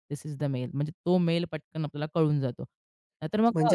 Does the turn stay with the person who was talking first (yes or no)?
no